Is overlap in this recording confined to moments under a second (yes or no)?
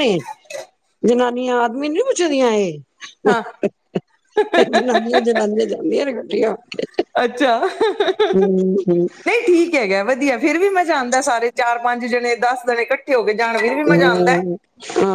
yes